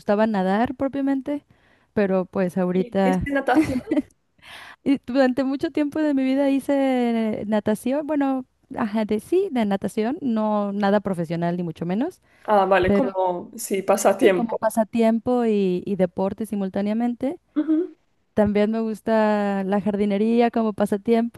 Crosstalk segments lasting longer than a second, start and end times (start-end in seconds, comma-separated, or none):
none